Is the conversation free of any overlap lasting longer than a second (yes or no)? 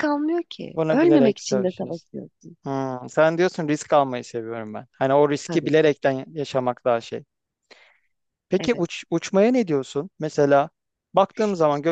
no